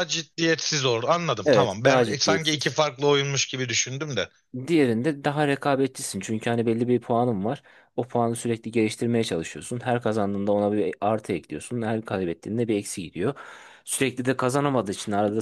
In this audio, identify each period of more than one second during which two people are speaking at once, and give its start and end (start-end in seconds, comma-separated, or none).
1.4-2.8